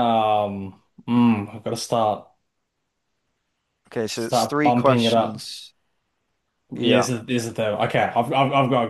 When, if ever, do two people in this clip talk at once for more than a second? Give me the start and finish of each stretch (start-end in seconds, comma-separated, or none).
4.1-5.5